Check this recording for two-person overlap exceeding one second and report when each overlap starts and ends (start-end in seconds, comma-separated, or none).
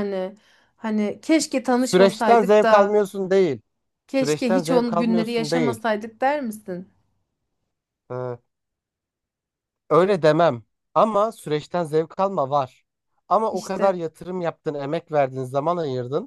1.8-3.0, 4.2-5.8